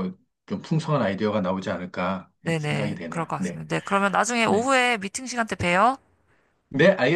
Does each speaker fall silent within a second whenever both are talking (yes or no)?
no